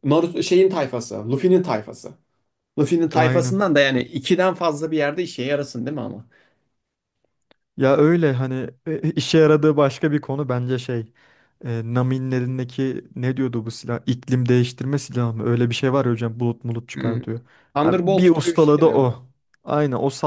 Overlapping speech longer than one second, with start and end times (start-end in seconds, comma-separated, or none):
17.8-19.2